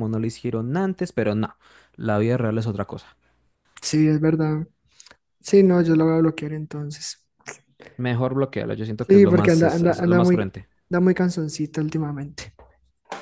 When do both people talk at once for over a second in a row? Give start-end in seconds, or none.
9.1-10.5